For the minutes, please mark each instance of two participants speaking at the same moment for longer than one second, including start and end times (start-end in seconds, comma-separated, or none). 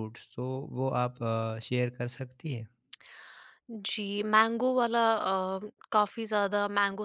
none